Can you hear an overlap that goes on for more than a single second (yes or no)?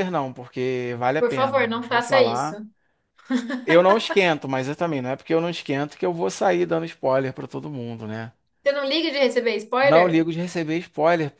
yes